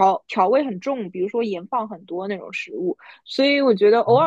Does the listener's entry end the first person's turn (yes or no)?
no